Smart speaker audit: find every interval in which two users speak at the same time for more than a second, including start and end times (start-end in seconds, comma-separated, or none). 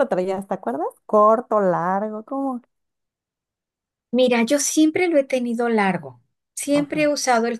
none